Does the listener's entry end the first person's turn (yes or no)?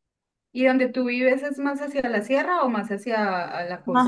yes